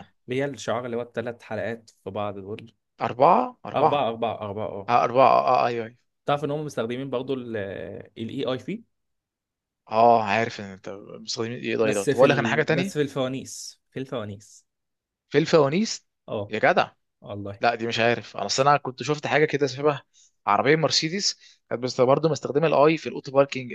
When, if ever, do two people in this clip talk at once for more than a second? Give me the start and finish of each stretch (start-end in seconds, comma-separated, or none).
11.8-13.1